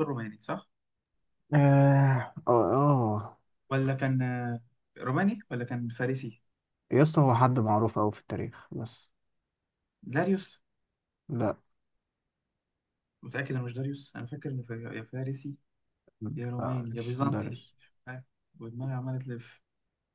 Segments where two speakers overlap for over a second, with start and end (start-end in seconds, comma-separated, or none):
16.4-17.6